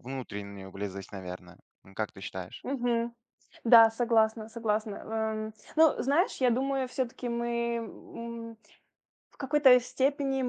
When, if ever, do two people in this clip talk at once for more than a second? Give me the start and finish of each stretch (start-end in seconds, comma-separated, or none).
none